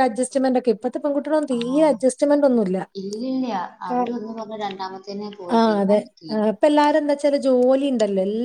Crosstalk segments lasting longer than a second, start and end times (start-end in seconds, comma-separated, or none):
none